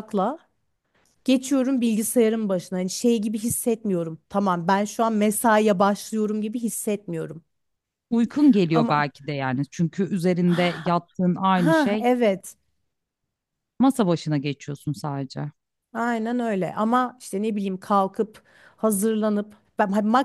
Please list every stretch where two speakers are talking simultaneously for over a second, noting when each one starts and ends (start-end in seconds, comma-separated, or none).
none